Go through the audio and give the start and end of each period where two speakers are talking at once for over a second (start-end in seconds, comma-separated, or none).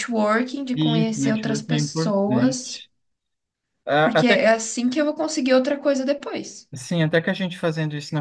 0.8-2.6